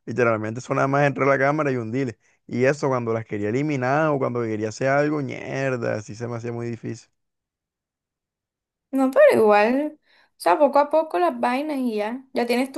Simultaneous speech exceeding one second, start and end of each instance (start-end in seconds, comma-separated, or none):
none